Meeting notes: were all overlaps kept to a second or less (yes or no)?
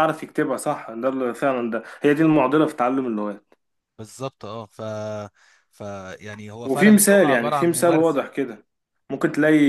no